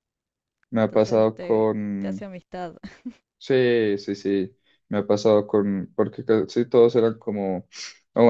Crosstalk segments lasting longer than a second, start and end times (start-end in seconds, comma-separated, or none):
0.8-2.3